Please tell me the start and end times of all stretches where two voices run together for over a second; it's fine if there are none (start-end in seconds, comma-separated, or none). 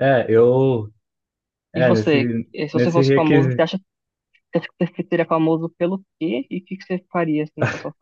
1.8-3.6